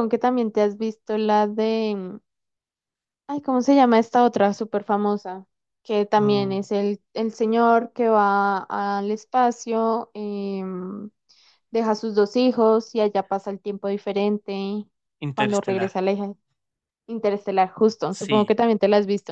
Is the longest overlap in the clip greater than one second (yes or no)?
no